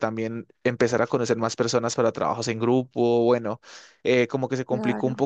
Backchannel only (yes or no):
yes